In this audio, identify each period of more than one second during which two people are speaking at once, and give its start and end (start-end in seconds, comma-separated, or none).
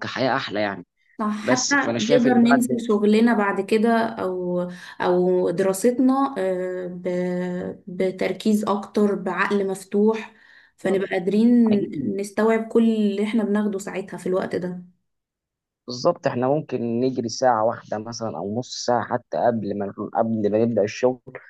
1.4-2.8